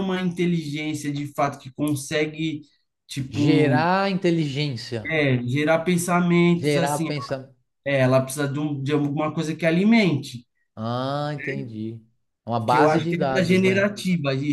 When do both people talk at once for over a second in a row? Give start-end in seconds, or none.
12.7-13.9